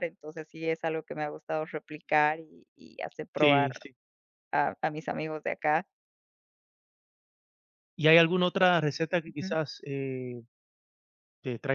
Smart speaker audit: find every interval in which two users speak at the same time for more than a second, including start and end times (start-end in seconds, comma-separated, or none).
none